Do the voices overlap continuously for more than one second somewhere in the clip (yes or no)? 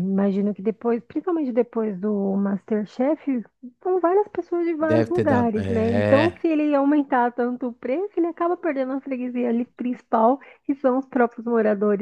yes